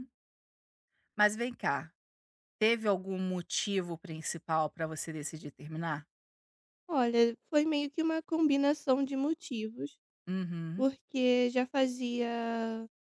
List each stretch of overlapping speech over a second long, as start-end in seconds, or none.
none